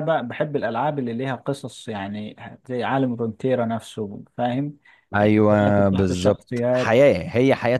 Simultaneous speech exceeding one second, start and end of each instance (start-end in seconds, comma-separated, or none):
5.2-7.0